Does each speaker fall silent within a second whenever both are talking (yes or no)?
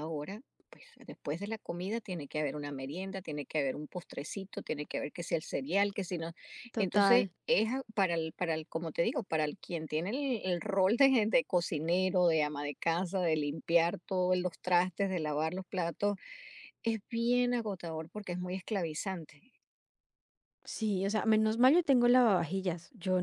yes